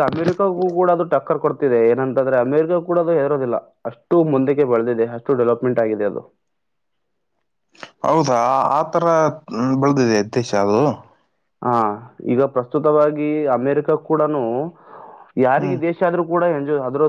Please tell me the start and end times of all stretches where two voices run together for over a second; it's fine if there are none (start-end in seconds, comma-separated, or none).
none